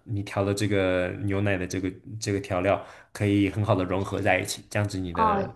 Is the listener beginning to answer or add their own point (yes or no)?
yes